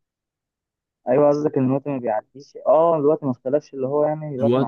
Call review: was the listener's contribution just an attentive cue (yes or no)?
no